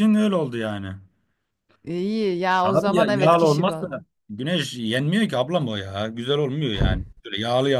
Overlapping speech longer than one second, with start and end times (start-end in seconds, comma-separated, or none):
2.6-3.9